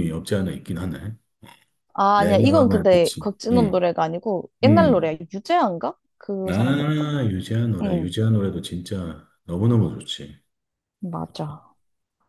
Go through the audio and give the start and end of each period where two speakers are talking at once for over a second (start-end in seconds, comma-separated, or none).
2.2-3.8